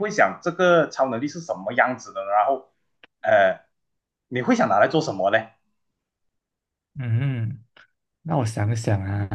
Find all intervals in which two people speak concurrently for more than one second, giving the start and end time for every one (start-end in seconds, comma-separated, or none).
none